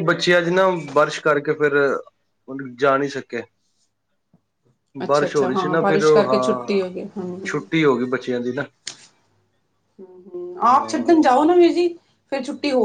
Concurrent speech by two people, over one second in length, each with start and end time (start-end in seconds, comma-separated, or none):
5.1-6.8